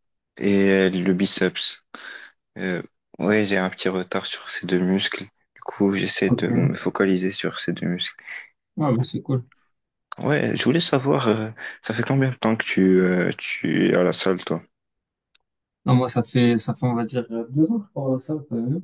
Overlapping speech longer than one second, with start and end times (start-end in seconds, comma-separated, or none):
none